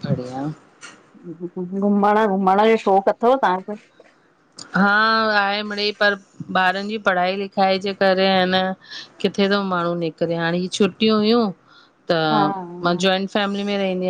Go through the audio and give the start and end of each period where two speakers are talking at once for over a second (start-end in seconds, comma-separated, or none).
none